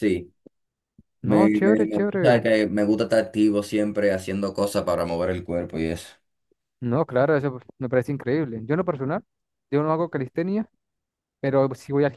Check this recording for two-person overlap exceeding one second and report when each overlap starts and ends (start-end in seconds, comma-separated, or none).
1.2-2.5